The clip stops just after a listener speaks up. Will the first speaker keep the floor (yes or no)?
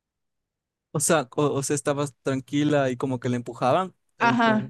no